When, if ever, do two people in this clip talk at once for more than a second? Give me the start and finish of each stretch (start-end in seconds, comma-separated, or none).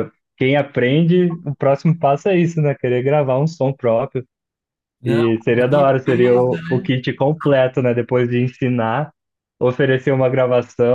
5.0-6.9